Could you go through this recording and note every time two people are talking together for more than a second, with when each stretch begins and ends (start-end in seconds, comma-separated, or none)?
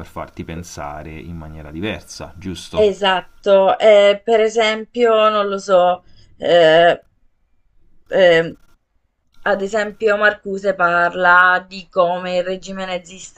none